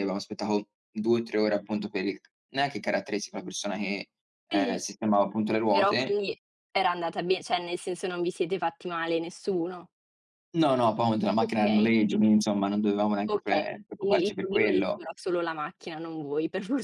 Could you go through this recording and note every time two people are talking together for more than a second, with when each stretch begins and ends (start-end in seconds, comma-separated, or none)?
13.3-15.0